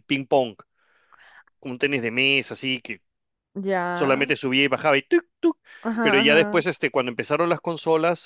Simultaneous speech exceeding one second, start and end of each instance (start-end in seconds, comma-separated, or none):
none